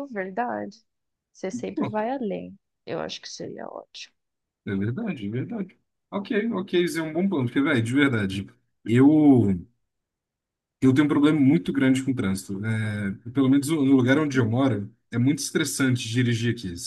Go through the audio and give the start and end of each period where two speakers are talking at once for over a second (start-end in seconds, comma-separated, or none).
none